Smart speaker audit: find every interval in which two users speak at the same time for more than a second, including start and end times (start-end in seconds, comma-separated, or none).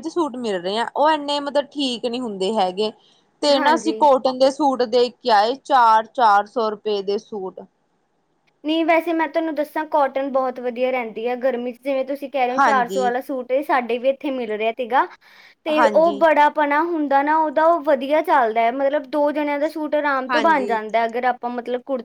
none